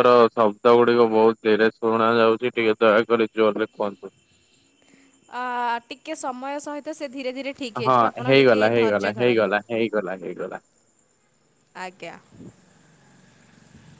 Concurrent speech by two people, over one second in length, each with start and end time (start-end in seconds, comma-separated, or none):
7.8-9.6